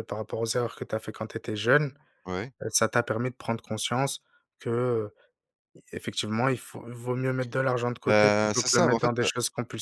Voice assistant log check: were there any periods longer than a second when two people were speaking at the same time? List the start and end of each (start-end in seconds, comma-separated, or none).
8.1-9.3